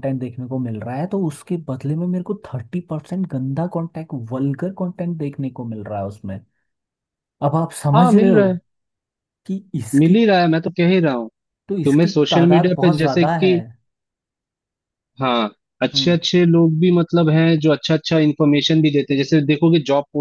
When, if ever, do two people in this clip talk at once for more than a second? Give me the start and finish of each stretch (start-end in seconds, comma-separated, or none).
11.8-13.5